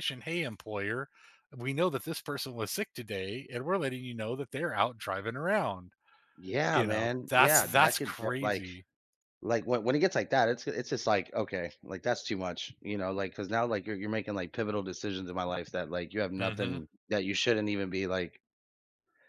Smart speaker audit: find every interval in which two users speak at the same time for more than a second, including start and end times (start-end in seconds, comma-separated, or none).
6.7-8.7